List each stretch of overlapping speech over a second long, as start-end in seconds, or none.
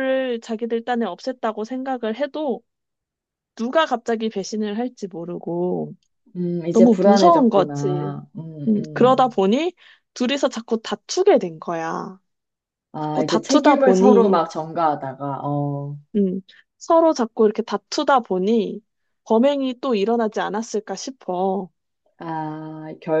6.7-8.1, 13.0-14.4